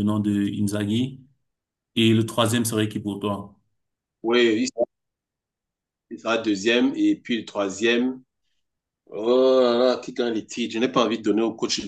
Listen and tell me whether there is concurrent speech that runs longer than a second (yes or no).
no